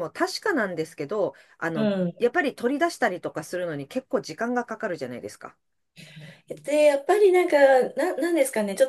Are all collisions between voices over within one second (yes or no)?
yes